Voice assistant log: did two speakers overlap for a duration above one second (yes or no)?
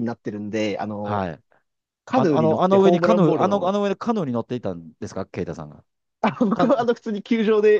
yes